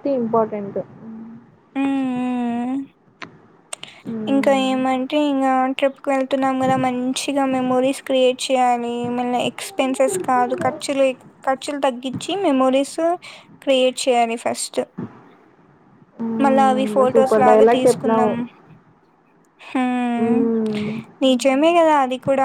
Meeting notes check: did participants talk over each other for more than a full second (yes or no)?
yes